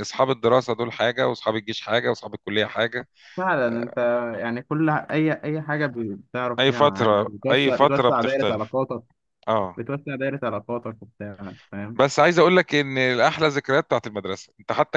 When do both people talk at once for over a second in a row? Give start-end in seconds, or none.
6.6-8.7